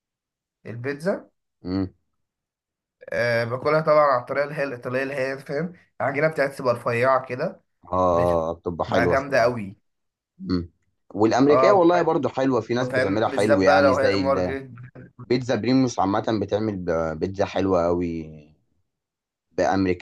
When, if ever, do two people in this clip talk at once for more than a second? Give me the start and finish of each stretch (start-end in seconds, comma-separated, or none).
8.1-9.6, 12.9-14.2